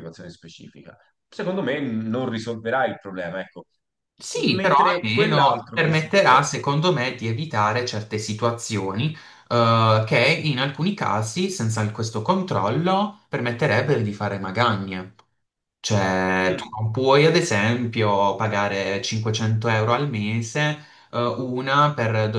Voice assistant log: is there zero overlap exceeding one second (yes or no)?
no